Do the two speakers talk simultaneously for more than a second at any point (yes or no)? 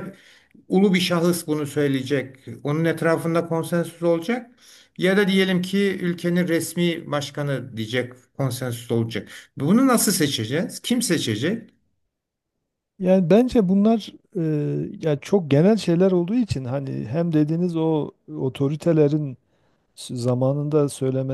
no